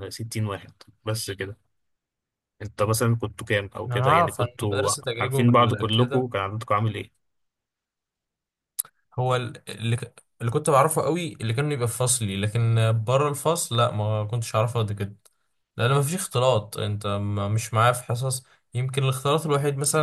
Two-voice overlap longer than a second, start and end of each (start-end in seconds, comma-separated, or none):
3.9-6.3